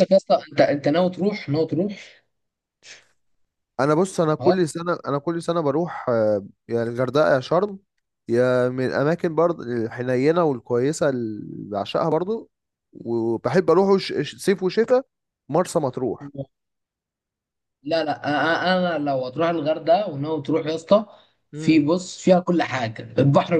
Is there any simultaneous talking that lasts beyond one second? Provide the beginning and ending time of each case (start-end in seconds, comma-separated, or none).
none